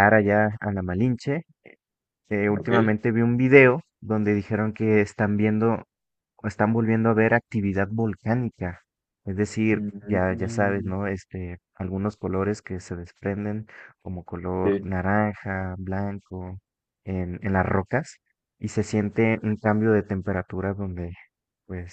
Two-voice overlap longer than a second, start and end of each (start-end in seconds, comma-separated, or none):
9.7-10.9